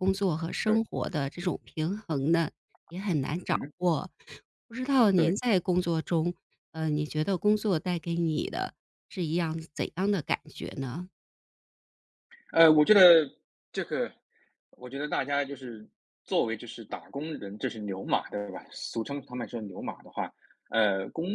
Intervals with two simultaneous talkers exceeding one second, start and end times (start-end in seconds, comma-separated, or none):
none